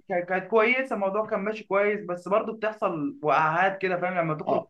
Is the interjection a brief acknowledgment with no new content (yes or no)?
no